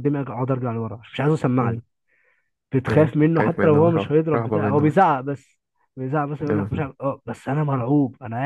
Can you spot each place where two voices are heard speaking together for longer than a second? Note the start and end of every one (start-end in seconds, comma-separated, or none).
2.9-5.0